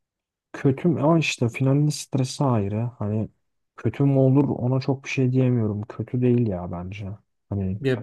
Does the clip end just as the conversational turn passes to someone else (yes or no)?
yes